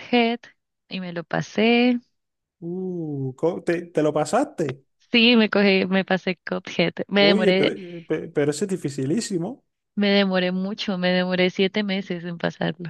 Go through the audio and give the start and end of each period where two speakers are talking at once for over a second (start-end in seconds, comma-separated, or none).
none